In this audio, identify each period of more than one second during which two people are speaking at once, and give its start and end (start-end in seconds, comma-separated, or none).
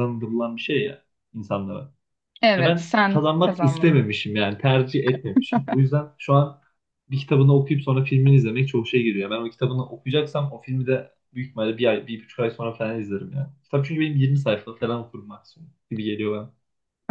2.6-4.0